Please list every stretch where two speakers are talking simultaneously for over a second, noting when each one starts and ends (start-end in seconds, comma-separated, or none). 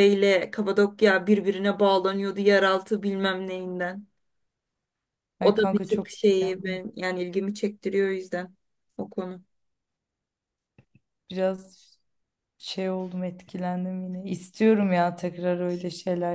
5.4-6.8